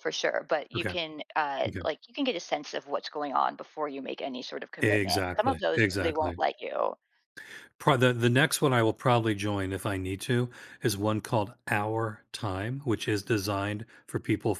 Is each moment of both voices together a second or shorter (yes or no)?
no